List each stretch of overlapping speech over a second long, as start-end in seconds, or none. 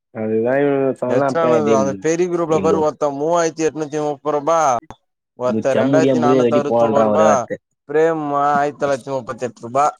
5.5-7.3